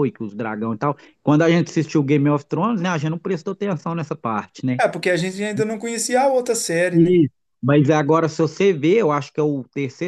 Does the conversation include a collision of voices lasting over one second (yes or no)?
no